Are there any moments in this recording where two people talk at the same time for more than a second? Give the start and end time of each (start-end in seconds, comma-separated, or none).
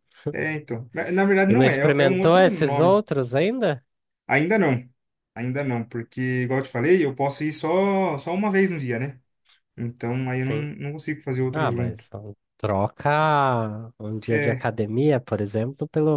1.5-3.0